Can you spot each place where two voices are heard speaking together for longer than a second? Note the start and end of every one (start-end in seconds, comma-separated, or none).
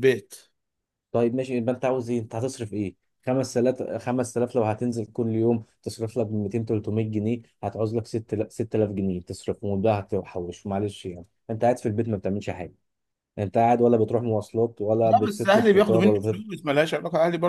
15.0-16.4